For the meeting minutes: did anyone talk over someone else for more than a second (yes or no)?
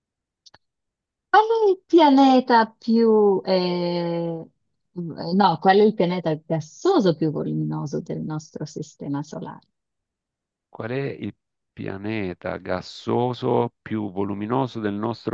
no